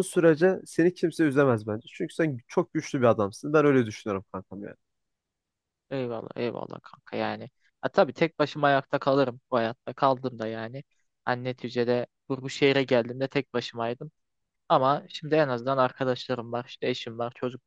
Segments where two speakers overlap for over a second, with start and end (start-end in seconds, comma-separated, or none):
none